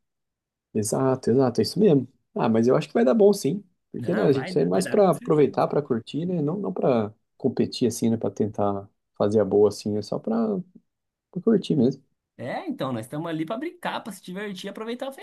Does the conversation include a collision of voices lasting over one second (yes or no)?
yes